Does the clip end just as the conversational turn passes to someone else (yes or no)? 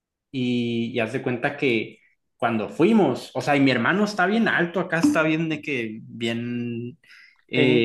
no